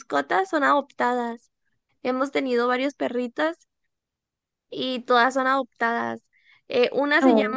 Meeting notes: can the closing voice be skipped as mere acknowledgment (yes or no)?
yes